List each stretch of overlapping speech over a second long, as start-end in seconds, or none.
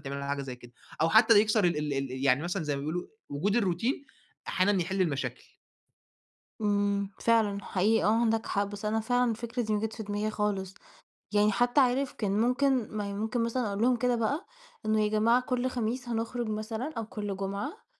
none